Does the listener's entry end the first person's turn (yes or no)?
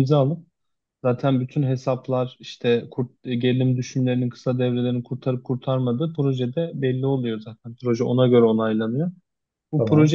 no